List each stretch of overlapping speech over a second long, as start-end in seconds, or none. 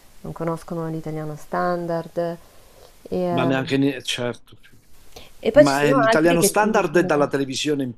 5.5-7.3